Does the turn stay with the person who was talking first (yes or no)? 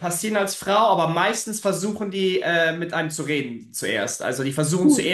yes